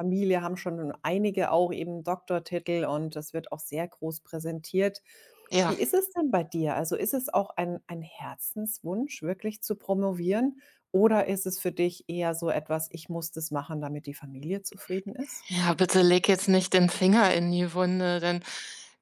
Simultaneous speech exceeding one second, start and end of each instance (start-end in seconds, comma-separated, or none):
none